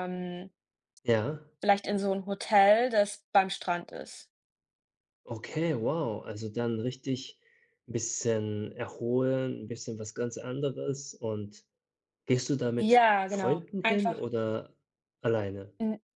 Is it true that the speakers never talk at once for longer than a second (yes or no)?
no